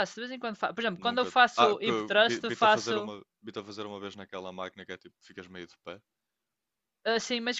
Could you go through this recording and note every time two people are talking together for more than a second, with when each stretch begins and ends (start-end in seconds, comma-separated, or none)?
1.1-3.1